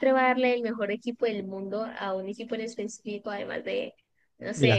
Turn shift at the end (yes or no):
no